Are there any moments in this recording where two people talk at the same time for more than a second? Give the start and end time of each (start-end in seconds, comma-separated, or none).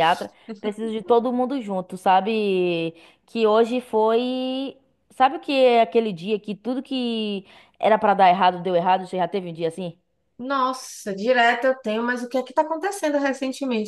none